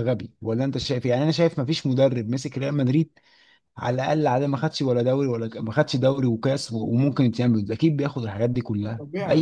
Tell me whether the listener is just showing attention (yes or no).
no